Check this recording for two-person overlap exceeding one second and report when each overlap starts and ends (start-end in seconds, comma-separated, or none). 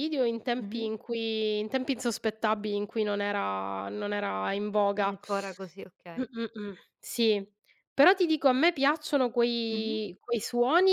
none